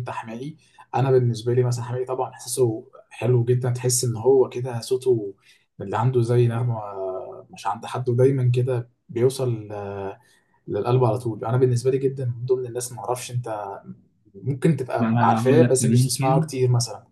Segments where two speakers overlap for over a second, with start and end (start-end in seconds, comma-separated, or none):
15.0-16.5